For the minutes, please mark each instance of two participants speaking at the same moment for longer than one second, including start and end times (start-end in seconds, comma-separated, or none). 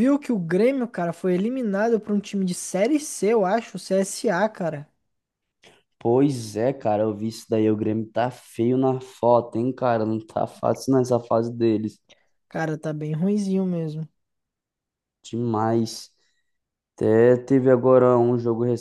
none